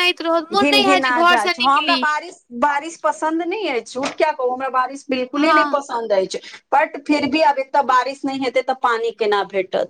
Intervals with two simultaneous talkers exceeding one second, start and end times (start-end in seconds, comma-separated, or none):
0.5-2.0